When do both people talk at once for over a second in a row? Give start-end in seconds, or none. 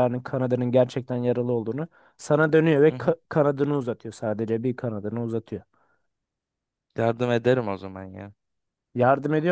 none